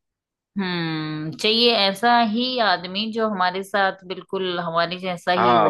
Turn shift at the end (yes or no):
yes